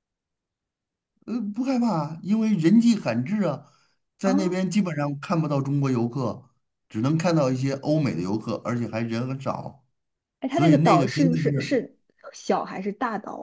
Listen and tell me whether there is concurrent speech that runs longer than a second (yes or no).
yes